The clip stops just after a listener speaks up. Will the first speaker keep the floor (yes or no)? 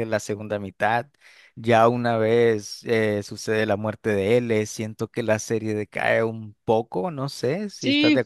no